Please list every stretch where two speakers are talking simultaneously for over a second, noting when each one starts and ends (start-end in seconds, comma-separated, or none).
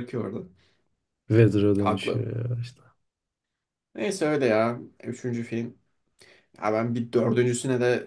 none